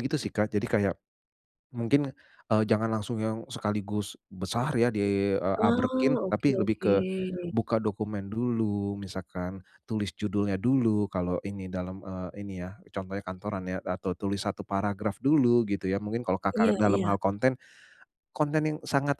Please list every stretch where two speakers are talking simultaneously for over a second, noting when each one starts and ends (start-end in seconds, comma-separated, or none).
5.6-6.9